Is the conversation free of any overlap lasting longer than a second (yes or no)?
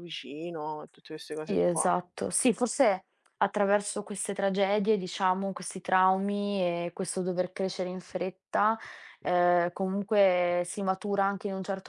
yes